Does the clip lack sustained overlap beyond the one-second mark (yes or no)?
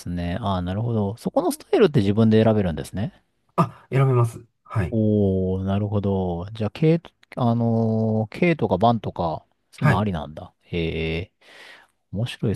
yes